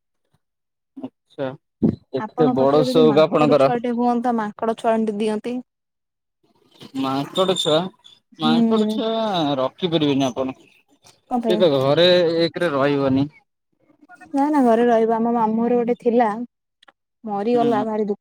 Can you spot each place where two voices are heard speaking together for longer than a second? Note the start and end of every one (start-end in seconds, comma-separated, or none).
none